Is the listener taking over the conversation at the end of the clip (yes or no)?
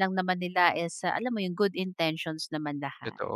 yes